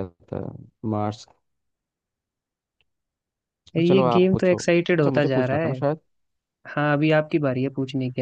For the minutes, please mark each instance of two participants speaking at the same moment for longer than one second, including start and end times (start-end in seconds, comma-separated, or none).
3.9-5.8